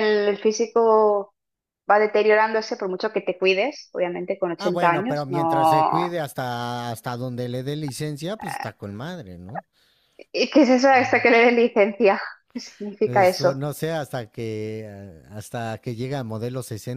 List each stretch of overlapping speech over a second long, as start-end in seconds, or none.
4.6-6.2